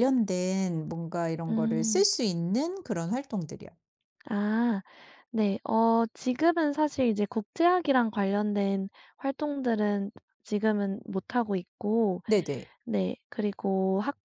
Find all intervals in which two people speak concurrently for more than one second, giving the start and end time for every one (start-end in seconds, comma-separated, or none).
none